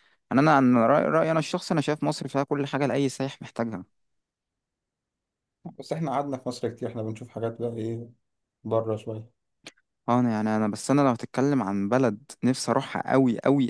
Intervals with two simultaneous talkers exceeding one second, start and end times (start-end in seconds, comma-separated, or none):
none